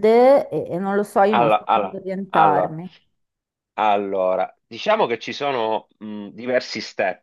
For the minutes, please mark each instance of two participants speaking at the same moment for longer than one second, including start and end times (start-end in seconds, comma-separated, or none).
1.3-2.7